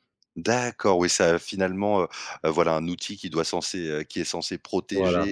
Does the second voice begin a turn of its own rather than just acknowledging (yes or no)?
no